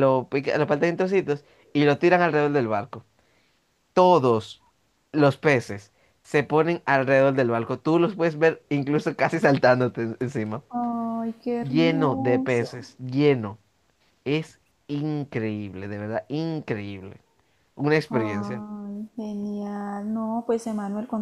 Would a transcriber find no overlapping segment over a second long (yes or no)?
no